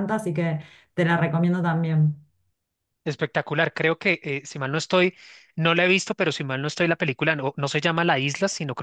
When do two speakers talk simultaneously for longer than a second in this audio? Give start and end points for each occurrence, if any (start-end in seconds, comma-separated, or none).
none